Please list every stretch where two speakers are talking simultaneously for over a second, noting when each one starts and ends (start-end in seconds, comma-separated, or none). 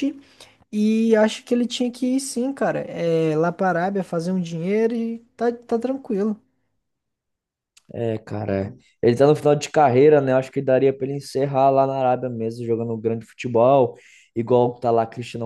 none